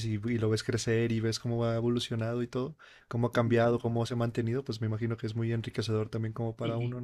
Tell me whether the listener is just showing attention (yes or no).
no